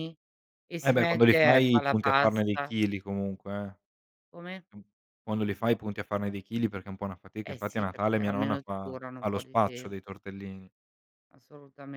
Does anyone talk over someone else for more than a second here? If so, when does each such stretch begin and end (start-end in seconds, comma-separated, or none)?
0.8-2.7, 7.5-10.2